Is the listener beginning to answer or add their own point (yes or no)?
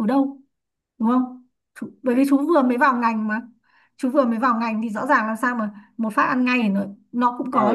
yes